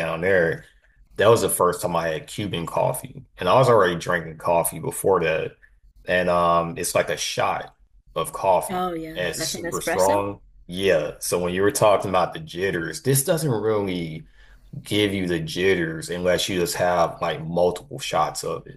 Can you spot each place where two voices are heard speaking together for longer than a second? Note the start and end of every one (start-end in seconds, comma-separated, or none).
8.7-10.2